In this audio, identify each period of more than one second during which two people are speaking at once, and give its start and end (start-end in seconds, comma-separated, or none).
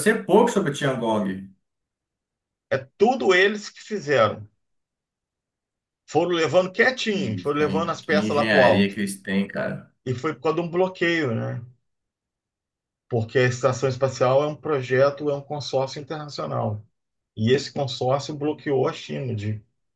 7.1-9.0